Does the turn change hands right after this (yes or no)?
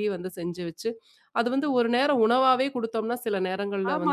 yes